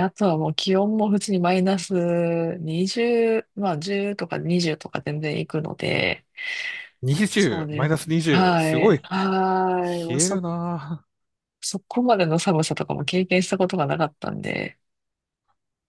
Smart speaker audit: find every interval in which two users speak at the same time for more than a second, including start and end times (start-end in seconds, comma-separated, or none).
7.3-9.0